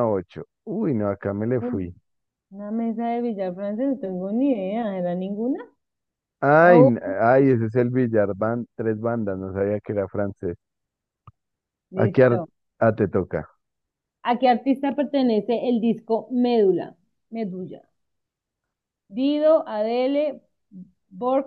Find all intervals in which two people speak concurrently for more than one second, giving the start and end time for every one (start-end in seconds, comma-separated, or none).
none